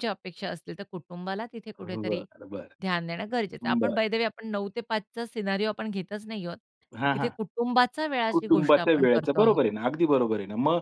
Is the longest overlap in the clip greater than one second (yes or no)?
yes